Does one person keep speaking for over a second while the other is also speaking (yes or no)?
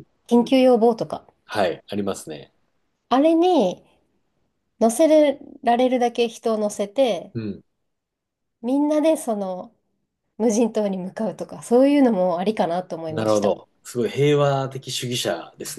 no